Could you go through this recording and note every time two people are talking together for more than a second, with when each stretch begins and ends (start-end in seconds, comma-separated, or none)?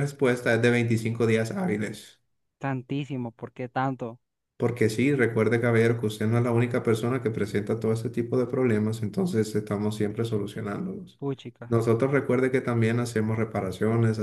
none